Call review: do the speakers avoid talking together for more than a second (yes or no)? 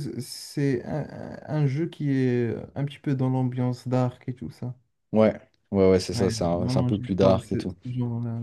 no